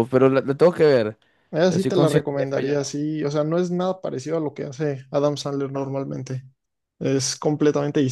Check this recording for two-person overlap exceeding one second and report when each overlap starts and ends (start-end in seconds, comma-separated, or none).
1.6-2.9